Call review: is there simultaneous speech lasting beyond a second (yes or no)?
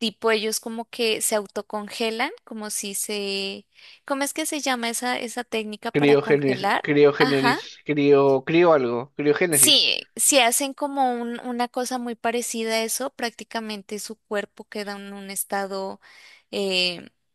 yes